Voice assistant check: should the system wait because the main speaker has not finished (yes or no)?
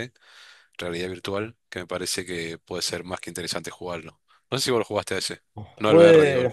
no